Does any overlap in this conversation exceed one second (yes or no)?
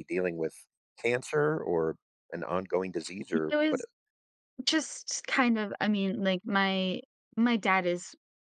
no